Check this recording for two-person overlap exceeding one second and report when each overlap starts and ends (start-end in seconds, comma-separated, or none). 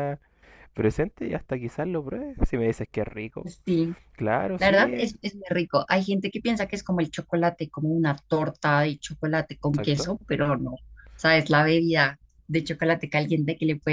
none